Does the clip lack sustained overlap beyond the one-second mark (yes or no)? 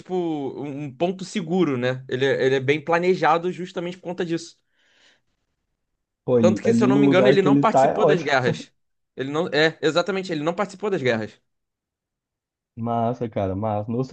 no